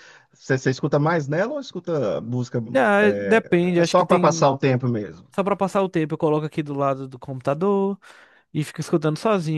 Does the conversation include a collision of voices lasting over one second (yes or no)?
yes